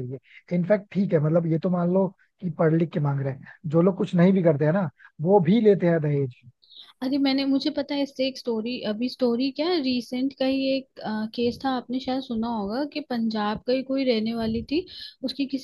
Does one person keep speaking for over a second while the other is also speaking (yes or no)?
no